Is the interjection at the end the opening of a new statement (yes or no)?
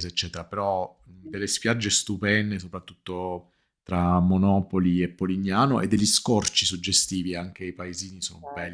yes